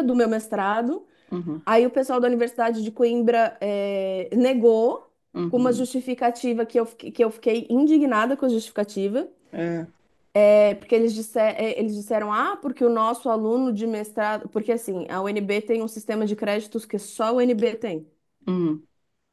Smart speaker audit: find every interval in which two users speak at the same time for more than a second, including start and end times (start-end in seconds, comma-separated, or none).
none